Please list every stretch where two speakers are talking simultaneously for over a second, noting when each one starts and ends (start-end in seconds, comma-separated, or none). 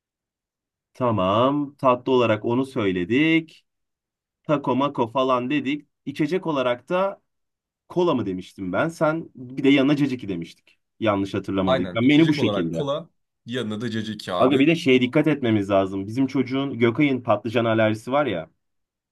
11.7-12.9